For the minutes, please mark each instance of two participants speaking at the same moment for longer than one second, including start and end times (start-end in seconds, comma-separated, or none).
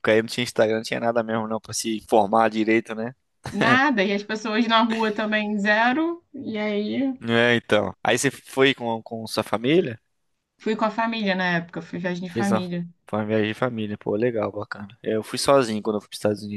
none